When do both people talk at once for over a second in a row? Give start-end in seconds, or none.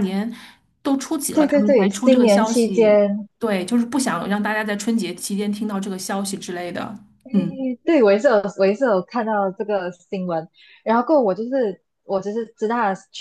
1.3-3.0